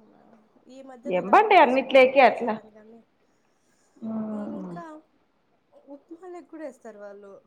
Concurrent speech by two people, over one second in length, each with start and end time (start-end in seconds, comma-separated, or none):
1.2-2.5